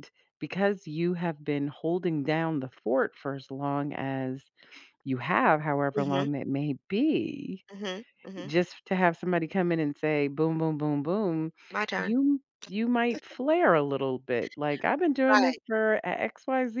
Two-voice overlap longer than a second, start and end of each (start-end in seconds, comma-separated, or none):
none